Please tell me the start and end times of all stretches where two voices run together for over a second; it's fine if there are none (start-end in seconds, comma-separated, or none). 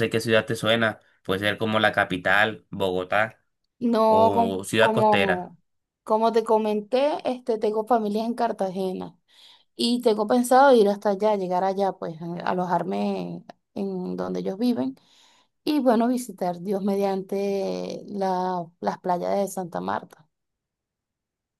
4.1-5.5